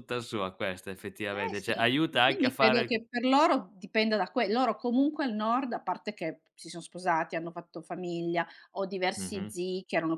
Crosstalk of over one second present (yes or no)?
yes